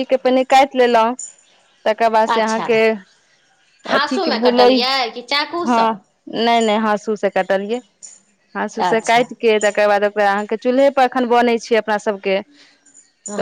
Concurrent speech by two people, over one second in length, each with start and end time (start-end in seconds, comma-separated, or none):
4.0-5.9